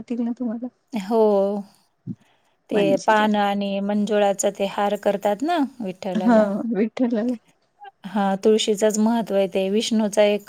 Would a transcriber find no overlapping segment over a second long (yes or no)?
yes